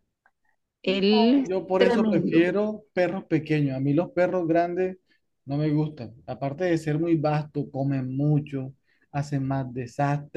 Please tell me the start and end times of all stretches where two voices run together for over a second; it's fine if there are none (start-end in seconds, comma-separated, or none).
0.9-2.5